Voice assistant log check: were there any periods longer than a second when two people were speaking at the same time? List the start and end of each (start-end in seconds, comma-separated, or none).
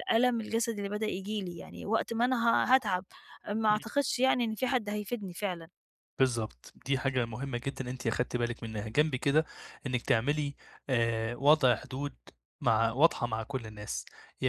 none